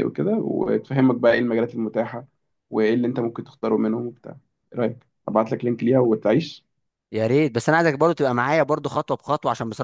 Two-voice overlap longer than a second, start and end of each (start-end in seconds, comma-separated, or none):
none